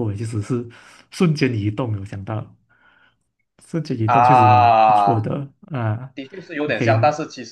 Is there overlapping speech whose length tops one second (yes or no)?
yes